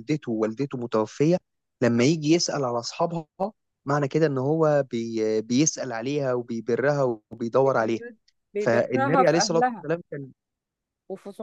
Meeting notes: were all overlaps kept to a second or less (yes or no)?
no